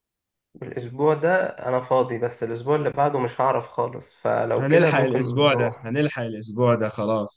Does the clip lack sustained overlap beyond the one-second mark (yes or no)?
no